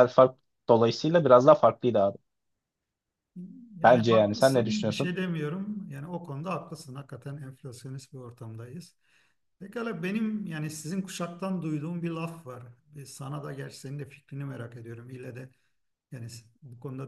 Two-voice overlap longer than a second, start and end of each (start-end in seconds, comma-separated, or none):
3.8-5.2